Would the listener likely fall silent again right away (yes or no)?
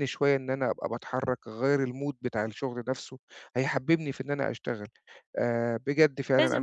no